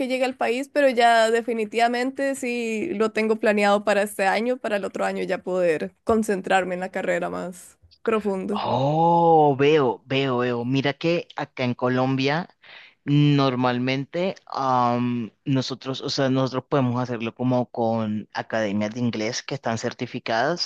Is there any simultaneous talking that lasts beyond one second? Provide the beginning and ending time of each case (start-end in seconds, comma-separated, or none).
none